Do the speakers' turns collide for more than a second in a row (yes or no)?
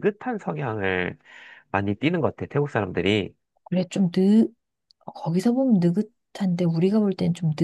no